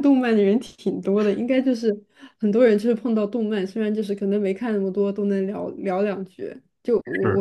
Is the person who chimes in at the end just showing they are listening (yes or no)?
yes